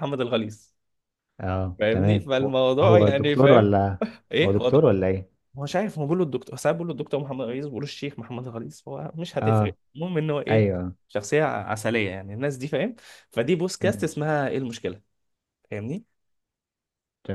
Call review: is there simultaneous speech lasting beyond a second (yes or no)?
yes